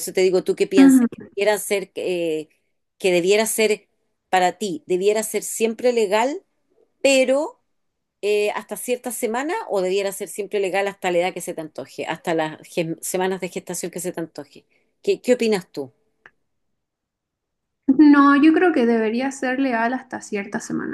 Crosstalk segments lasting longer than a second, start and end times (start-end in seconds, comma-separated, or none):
none